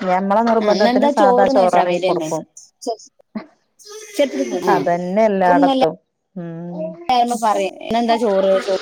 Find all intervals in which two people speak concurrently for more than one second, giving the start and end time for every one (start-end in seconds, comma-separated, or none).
0.6-2.3